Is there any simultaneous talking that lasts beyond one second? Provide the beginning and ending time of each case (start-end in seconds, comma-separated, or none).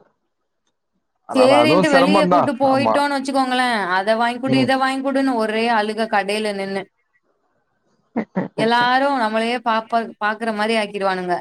1.4-2.9